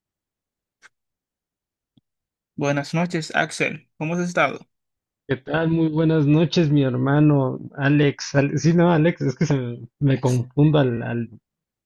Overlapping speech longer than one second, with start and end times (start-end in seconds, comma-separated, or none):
none